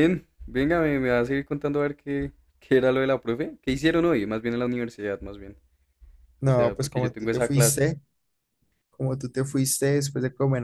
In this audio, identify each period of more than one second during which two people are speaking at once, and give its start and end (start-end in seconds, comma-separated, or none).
6.4-7.9